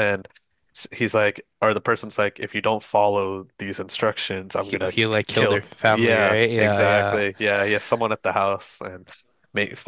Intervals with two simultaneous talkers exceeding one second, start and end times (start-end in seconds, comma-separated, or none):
4.6-7.2